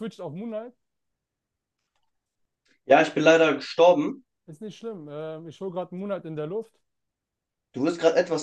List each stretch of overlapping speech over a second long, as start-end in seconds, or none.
none